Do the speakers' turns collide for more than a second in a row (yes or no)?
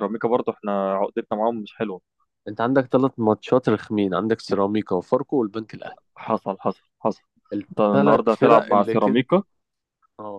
yes